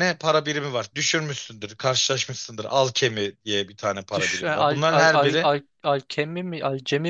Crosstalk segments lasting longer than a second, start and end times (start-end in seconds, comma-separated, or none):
4.2-5.5